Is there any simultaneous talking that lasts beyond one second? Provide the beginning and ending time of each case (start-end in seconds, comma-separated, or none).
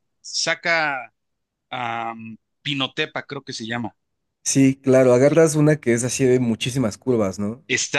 none